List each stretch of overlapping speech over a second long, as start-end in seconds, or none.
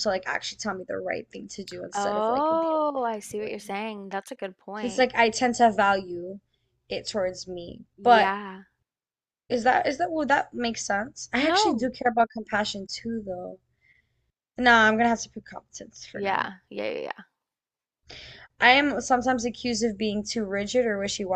1.9-3.7